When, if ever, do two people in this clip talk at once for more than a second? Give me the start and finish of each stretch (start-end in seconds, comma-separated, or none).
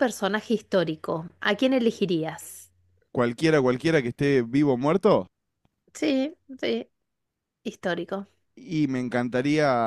none